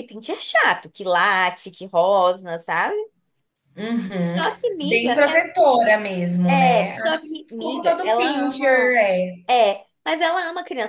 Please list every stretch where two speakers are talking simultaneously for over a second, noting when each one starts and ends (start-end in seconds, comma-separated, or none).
6.5-9.0